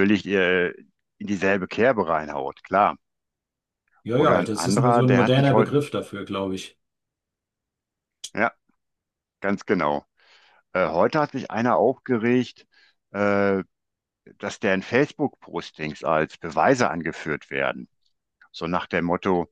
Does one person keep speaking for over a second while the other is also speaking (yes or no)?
yes